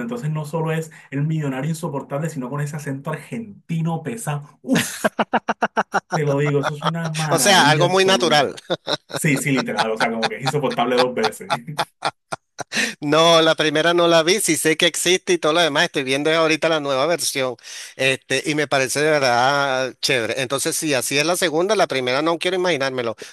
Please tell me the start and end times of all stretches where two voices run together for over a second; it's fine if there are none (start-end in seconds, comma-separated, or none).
7.3-8.6